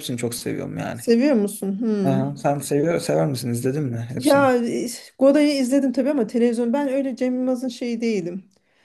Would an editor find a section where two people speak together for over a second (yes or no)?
no